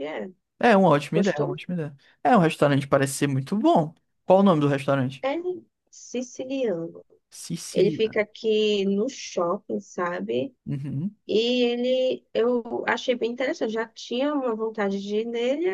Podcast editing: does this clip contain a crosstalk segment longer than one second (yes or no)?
no